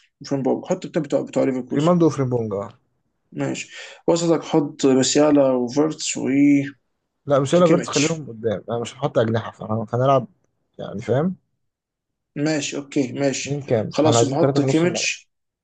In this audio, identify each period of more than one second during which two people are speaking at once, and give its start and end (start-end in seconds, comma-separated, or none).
13.4-15.1